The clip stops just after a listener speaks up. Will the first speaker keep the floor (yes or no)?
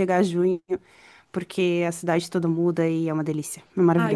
no